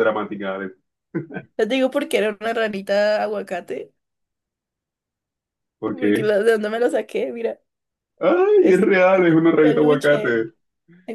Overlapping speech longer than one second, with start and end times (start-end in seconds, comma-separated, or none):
8.6-10.4